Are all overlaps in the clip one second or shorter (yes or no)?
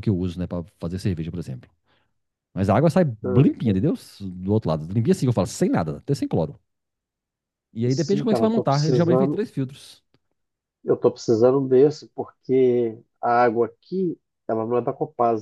no